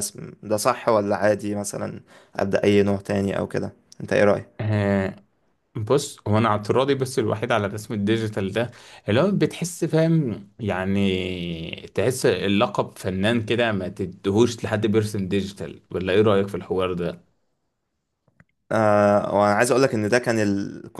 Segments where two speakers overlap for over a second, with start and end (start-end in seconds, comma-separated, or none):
none